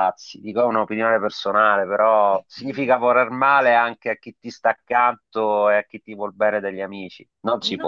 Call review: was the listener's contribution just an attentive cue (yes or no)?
no